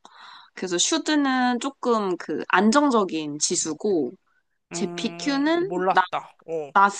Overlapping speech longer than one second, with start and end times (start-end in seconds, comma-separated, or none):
4.7-6.0